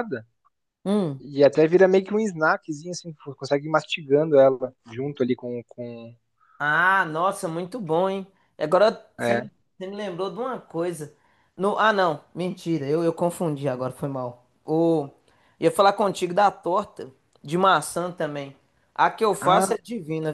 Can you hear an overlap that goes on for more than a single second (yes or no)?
no